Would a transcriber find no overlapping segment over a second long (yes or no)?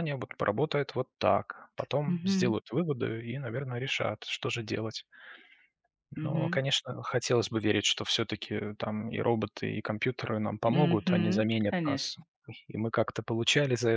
no